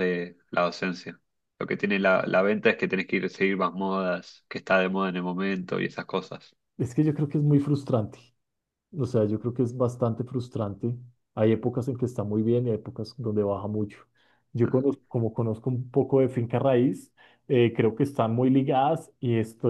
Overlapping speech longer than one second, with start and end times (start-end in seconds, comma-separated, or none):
none